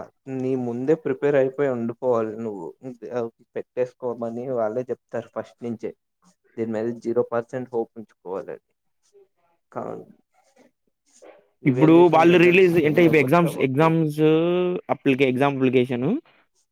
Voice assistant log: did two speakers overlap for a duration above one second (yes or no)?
yes